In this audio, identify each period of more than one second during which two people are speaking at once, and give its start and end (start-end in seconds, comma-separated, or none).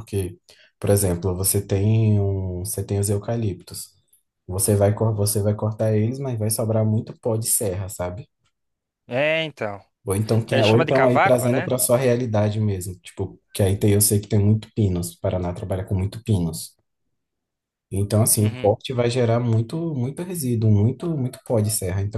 10.5-11.7